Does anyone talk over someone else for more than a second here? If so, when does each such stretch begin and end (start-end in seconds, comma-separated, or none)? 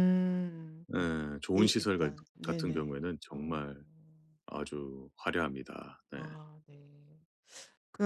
1.6-3.7